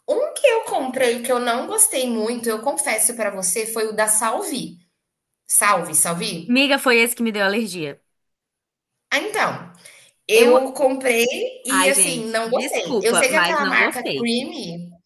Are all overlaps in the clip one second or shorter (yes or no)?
no